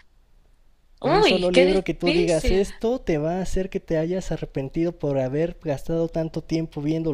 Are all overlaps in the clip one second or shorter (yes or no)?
no